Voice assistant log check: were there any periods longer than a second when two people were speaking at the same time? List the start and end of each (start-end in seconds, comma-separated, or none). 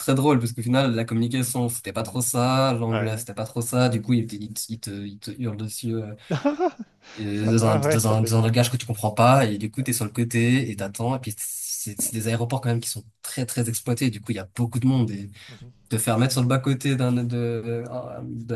7.3-8.5